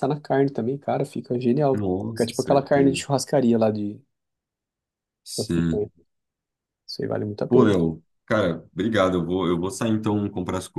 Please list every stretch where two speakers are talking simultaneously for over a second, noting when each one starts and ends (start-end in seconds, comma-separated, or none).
1.7-3.0